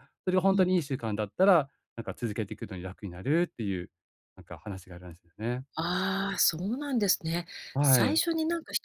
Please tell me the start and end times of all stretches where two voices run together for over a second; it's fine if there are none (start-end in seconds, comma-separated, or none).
none